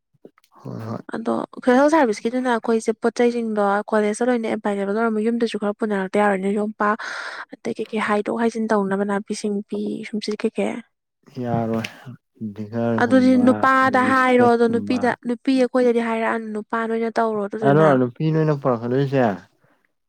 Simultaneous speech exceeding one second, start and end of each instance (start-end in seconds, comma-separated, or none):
13.0-15.0